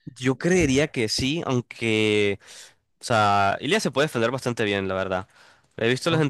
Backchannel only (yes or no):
yes